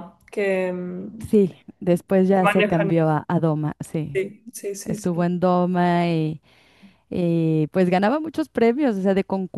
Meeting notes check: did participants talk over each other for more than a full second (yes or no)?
no